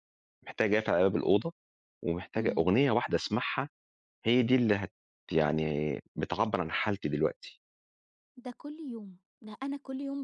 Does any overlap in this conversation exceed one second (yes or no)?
no